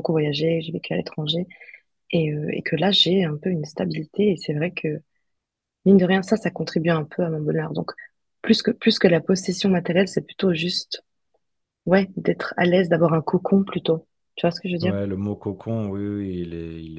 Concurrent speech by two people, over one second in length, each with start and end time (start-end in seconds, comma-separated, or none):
none